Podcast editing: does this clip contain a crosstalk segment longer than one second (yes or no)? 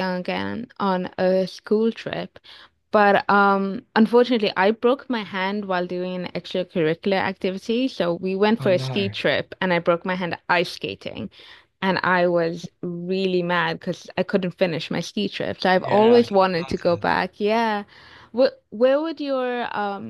yes